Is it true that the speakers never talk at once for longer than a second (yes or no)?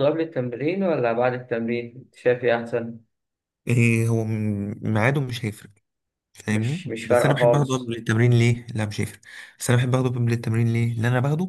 no